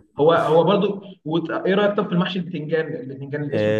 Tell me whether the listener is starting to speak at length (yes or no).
yes